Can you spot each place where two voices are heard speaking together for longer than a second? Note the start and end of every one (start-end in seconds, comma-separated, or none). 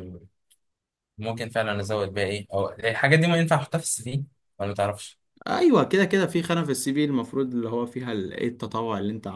none